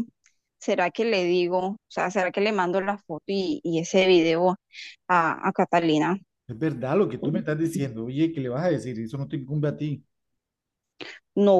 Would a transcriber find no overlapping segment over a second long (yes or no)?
yes